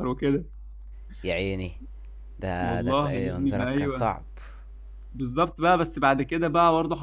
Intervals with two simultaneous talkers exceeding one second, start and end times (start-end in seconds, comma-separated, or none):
2.6-4.2